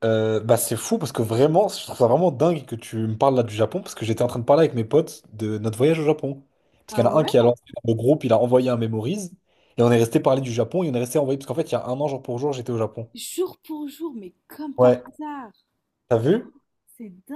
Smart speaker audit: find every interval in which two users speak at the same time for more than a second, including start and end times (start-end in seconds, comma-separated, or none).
none